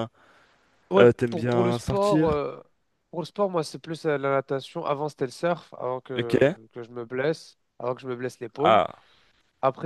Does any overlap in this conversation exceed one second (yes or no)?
yes